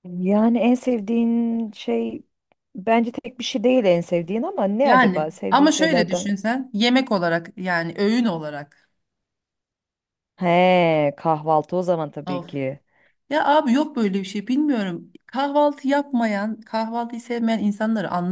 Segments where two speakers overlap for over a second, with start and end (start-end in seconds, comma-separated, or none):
4.8-6.3